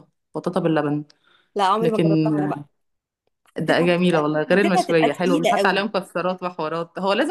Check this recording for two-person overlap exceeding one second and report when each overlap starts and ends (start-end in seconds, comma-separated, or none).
3.6-5.9